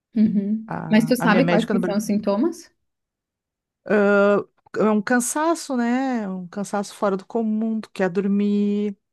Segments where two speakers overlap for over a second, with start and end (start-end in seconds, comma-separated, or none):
0.7-2.0